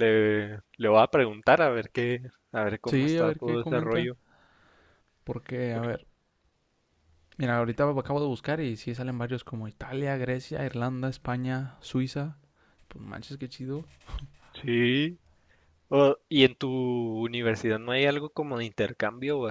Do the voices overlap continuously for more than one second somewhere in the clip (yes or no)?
yes